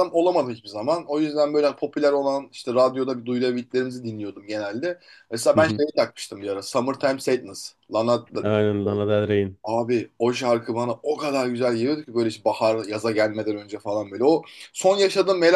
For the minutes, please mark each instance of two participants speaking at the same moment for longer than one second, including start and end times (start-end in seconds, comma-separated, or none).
none